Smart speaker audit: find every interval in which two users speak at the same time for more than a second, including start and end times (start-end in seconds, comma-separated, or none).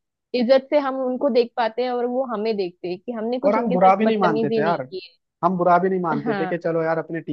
3.5-4.9